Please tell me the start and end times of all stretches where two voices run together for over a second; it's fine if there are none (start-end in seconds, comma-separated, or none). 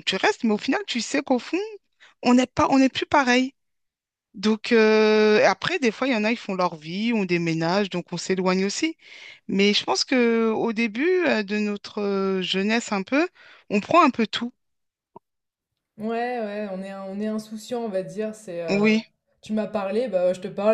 none